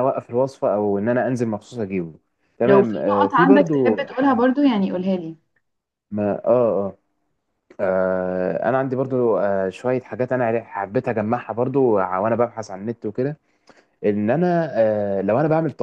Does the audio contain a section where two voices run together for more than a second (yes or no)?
yes